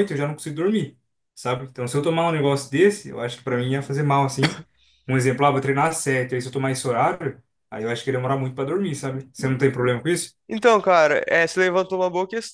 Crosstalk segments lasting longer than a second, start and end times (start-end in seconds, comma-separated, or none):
none